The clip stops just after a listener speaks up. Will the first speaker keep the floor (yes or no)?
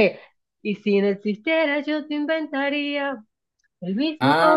no